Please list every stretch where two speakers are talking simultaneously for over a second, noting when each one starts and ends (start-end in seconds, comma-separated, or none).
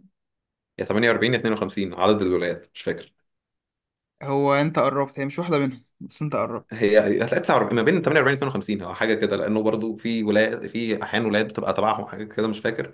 none